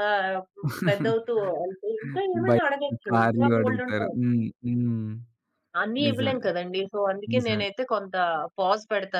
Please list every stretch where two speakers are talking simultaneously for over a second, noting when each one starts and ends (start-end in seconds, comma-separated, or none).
2.5-4.2